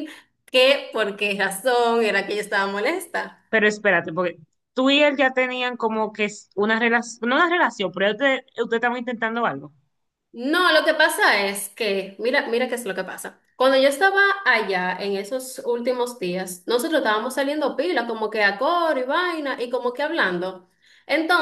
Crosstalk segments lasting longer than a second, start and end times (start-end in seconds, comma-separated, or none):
none